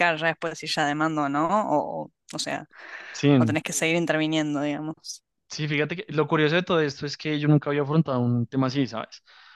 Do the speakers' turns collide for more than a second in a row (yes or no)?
no